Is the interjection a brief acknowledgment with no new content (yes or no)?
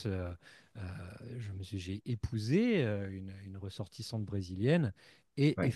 yes